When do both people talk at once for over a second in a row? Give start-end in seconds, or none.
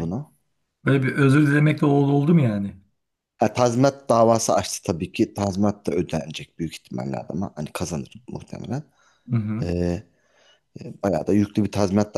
none